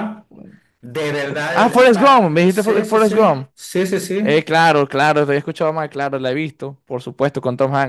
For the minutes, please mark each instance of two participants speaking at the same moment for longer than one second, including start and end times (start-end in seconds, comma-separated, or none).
1.5-3.2